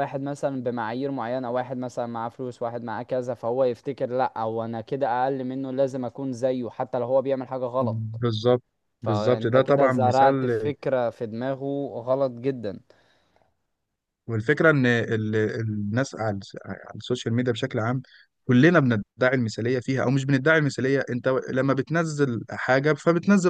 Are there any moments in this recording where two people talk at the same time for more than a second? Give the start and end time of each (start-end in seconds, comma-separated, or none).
9.0-10.5